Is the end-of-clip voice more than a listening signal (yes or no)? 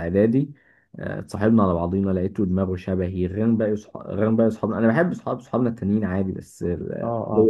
no